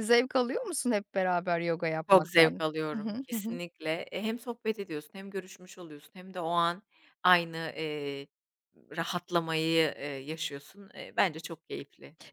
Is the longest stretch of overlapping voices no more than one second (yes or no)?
no